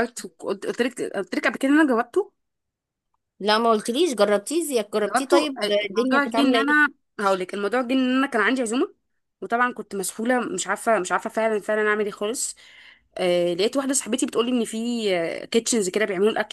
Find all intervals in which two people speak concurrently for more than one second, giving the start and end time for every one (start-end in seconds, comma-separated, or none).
5.0-6.9